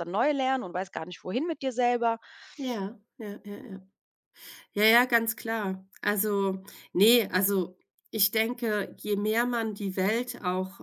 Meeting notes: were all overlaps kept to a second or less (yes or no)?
yes